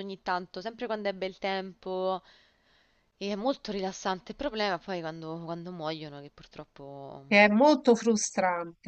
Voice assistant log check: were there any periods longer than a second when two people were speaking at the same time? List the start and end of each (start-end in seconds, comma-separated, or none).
none